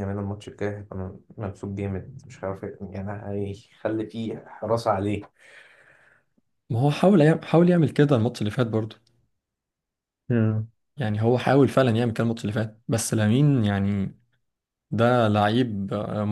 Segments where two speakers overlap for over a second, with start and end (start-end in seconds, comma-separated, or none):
none